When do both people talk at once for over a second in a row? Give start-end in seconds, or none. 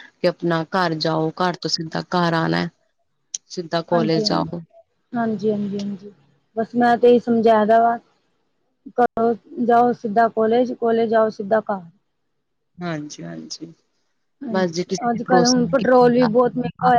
14.5-16.3